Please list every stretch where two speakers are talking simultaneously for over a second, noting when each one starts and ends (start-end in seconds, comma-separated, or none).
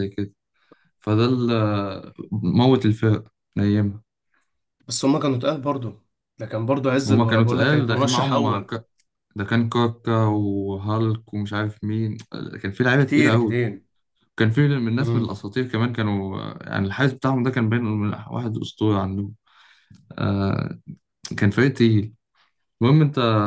7.1-8.7